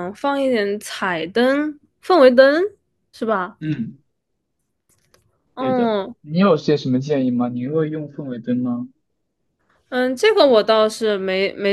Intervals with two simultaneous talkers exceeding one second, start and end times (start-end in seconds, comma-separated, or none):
none